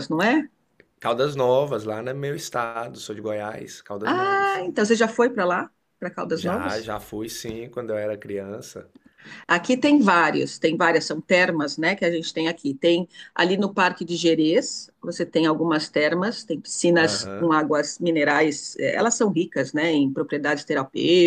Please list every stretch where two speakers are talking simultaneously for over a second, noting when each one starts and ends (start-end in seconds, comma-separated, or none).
none